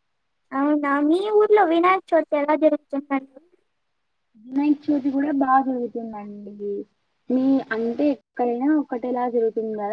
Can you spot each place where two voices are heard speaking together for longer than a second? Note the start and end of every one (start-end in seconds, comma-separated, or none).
none